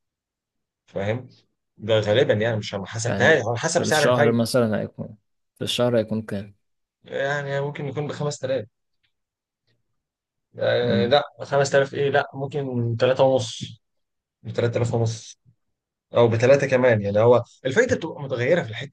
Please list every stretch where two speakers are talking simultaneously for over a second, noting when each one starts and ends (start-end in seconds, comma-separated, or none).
3.0-4.4